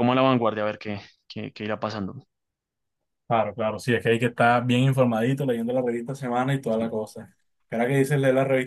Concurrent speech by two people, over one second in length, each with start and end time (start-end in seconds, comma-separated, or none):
none